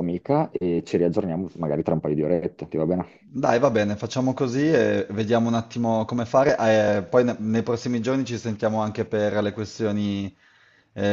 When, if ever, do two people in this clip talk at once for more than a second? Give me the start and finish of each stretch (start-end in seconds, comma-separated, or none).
none